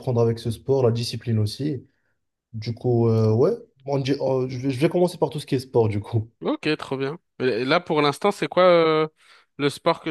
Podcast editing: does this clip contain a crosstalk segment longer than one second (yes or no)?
no